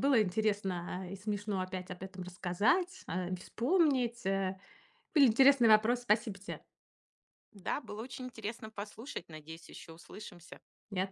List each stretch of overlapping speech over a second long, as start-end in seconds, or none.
none